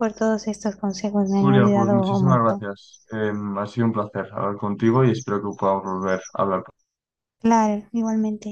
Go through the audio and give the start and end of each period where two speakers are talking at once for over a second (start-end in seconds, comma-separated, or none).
1.4-2.6